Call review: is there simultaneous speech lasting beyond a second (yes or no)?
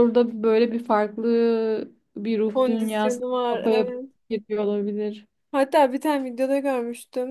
yes